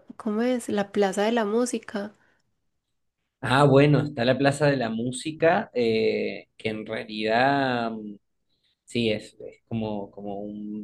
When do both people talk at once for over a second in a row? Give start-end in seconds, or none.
none